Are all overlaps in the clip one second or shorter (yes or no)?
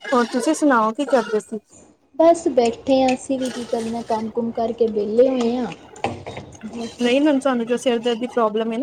yes